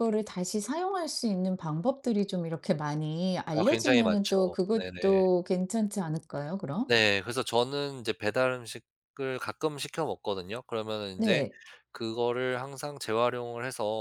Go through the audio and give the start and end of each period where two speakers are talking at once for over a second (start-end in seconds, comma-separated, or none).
3.5-5.2